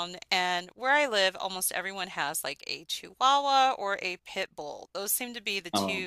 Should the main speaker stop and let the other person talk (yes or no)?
no